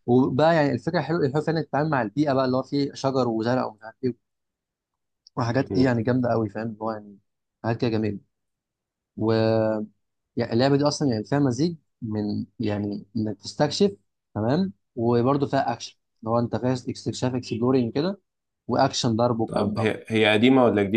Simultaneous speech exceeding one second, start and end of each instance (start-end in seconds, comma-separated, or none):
none